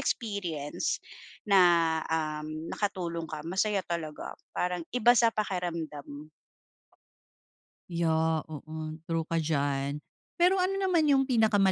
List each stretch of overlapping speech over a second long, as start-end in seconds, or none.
none